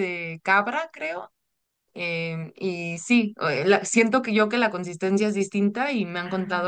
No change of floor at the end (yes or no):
yes